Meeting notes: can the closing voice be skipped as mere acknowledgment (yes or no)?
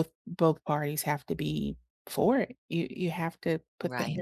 yes